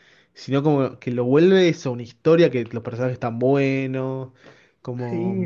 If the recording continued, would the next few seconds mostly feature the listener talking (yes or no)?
yes